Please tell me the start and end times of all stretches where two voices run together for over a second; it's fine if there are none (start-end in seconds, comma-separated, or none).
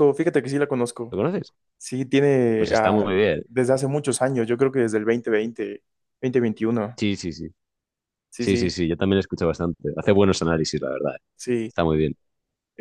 none